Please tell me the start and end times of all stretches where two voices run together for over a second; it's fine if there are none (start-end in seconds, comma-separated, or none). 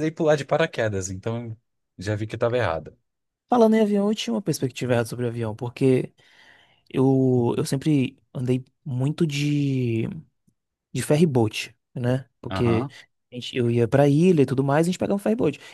none